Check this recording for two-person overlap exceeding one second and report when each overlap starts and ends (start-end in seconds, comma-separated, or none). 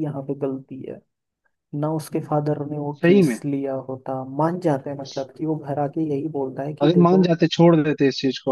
none